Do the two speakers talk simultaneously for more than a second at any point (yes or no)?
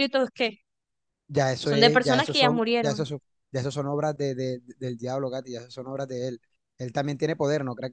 yes